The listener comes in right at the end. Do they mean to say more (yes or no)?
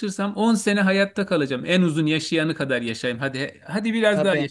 no